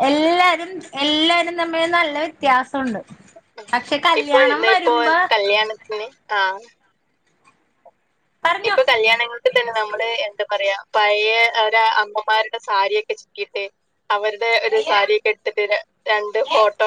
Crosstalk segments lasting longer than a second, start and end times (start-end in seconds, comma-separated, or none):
none